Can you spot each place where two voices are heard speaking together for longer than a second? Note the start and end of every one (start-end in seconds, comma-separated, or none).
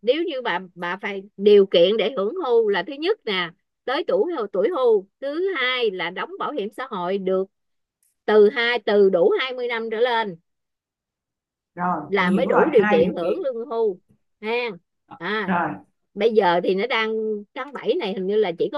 12.1-13.4